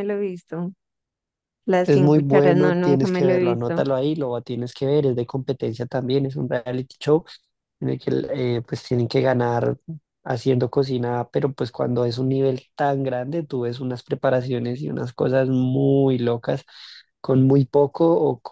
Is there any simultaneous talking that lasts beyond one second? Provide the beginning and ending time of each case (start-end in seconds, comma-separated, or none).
1.8-3.8